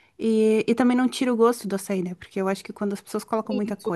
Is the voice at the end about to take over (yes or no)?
no